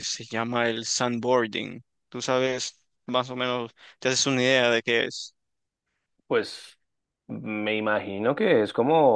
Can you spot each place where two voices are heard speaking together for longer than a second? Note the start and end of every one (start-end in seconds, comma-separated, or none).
none